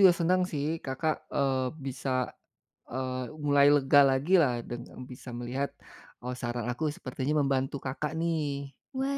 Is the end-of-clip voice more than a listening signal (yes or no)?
yes